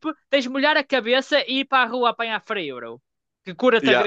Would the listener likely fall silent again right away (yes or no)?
no